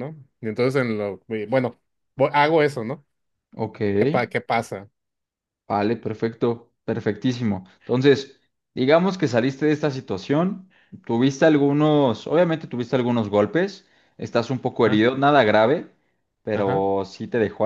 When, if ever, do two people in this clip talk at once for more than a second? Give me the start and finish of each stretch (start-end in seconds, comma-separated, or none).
none